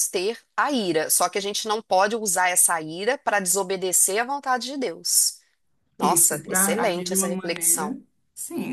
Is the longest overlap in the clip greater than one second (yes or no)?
yes